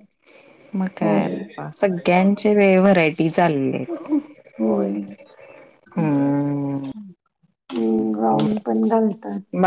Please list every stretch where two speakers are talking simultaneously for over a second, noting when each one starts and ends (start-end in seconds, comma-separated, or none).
none